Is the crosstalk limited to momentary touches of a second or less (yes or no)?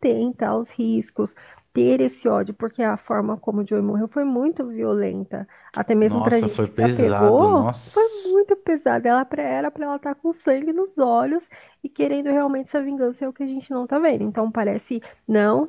no